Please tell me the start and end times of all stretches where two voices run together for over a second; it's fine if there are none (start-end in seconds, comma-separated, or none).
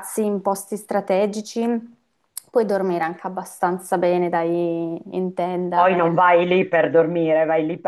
none